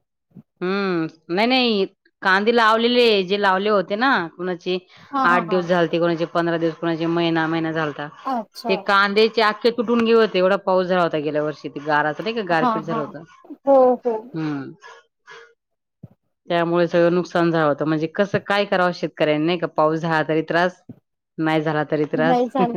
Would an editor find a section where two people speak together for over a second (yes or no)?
no